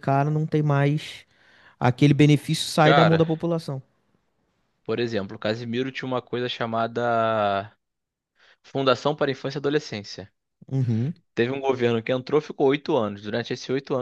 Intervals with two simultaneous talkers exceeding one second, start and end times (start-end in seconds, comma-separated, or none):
none